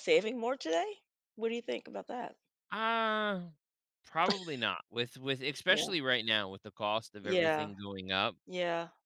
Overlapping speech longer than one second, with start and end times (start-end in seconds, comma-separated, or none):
none